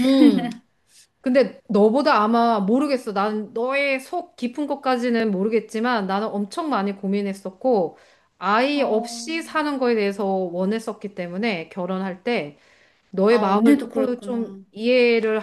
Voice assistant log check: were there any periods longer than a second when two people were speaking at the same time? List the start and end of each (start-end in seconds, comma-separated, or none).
13.3-14.6